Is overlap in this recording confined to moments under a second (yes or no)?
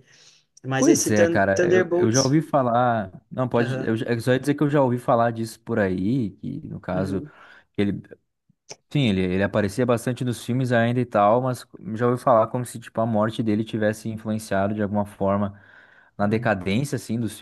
no